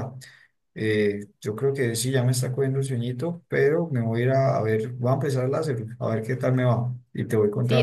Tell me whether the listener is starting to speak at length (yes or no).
yes